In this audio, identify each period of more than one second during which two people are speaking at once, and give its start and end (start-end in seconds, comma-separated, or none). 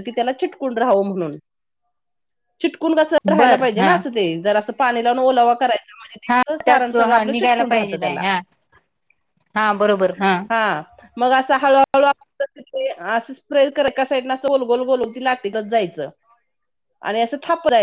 6.3-8.2